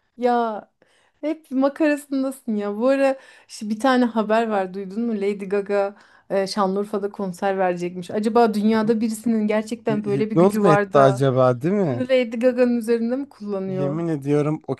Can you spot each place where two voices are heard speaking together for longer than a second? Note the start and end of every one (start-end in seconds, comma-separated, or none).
9.9-11.2